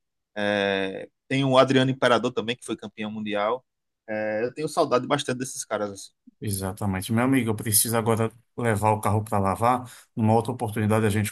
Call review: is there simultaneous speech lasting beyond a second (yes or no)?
no